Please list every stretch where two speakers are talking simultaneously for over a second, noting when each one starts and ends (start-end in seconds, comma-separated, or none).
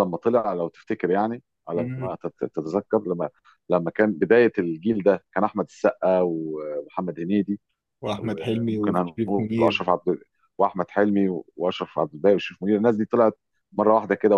8.2-9.9